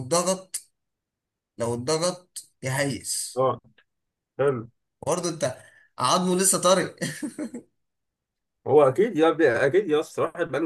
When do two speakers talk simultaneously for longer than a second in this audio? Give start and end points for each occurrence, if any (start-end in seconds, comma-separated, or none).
none